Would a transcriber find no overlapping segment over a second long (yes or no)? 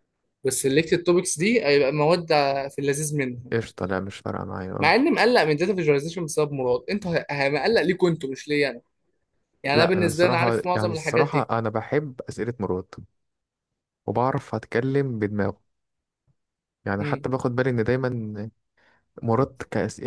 no